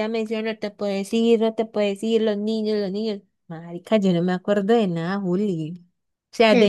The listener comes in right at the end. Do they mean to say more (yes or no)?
yes